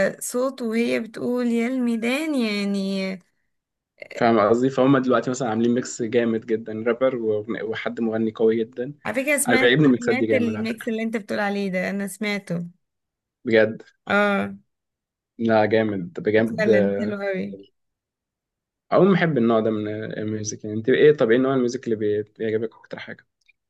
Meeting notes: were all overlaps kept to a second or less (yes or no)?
no